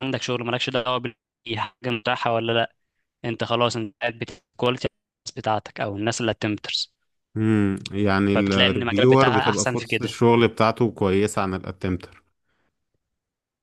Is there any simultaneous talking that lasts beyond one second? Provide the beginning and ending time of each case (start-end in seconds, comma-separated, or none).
8.3-10.2